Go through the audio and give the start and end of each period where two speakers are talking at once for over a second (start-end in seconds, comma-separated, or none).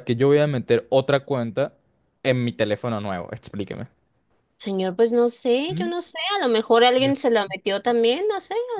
none